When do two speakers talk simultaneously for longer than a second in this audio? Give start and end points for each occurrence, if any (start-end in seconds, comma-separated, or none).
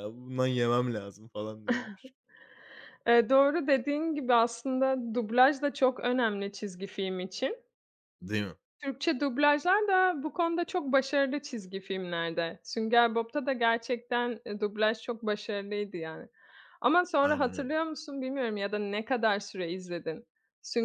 none